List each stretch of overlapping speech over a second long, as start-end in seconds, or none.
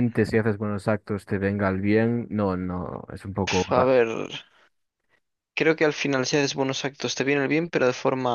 none